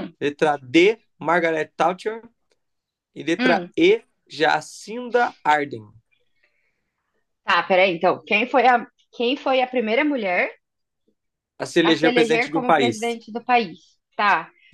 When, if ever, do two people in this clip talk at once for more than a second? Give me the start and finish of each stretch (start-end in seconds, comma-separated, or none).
11.8-13.2